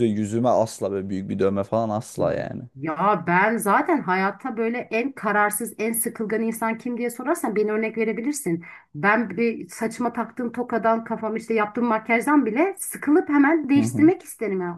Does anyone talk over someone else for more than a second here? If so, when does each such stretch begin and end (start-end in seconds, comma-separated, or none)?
none